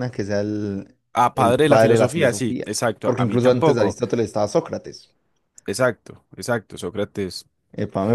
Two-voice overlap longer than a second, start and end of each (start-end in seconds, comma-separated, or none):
1.3-4.0